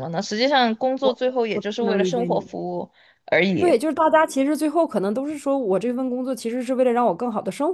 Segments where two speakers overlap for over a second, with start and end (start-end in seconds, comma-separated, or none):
1.0-2.5